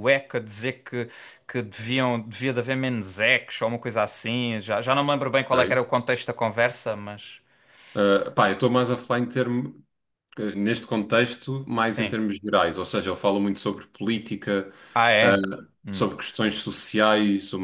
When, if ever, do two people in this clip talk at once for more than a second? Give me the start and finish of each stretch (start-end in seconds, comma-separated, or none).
none